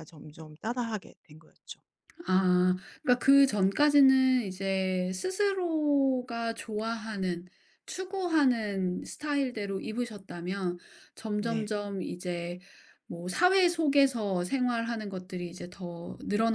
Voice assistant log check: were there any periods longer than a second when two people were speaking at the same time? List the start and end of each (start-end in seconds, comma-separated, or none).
none